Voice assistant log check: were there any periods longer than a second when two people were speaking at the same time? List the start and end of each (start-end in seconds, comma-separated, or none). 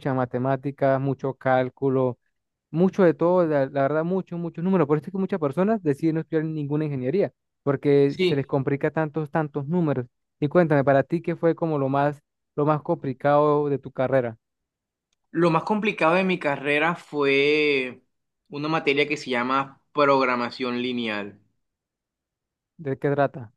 none